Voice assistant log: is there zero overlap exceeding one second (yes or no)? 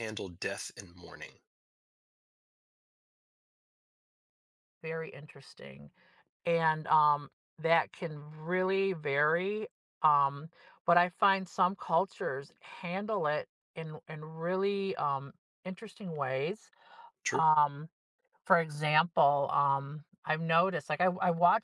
yes